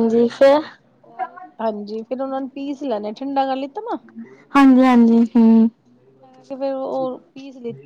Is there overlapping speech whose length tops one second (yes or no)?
no